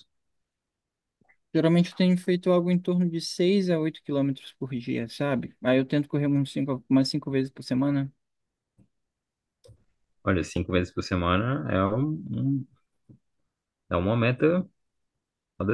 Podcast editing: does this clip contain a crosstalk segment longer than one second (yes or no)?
no